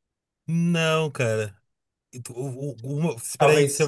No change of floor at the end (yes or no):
yes